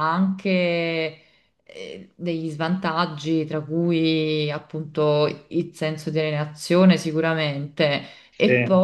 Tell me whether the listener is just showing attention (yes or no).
yes